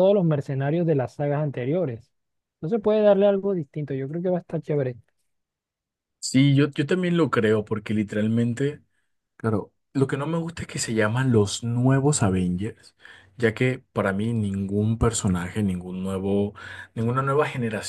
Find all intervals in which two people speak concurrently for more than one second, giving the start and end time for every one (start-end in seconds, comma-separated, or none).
none